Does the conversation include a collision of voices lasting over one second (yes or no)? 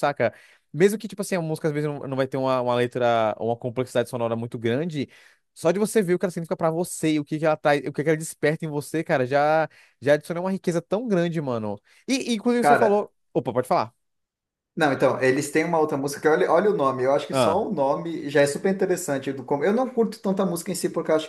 no